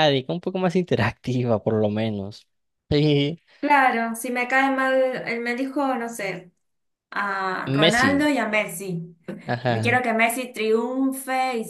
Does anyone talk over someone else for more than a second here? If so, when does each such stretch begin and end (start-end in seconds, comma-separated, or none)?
none